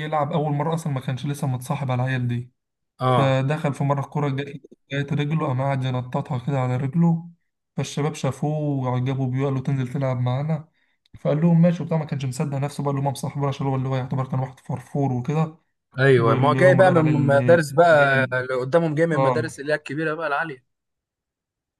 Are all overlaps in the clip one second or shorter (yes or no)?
no